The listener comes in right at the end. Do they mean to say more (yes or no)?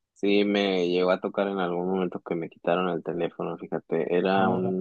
no